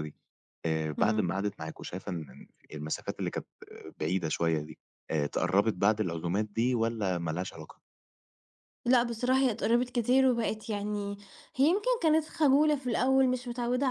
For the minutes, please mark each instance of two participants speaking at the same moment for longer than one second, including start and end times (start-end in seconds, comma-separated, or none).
none